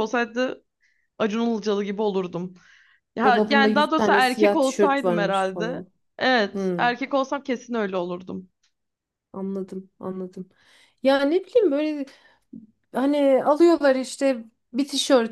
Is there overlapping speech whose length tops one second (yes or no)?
yes